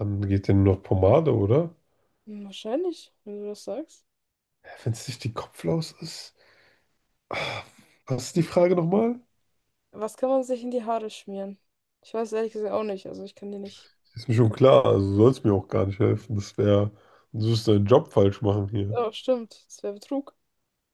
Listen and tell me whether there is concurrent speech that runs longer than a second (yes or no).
no